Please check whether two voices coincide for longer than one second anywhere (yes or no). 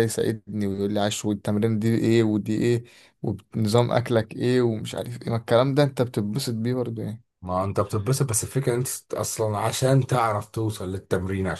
no